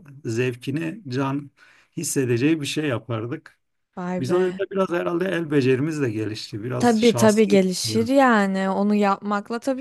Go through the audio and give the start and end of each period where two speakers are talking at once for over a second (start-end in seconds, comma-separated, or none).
6.8-8.1